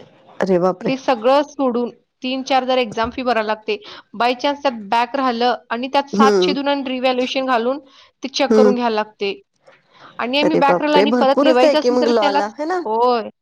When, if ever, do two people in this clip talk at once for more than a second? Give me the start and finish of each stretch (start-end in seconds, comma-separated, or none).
10.5-12.4